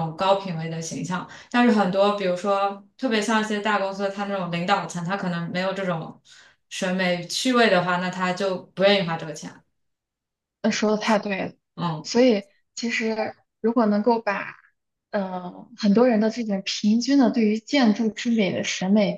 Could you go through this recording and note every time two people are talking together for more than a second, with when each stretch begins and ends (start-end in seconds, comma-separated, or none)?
none